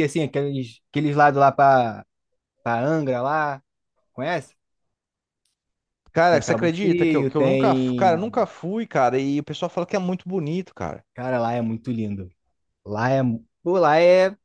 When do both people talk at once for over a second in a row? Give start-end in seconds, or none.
6.3-8.2